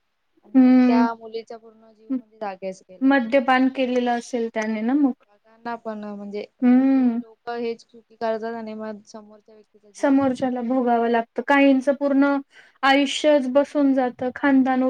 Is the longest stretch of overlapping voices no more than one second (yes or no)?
yes